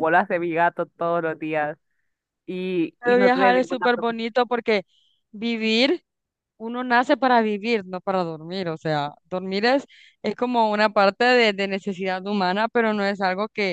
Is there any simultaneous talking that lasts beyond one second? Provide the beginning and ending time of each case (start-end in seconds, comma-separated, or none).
3.0-4.3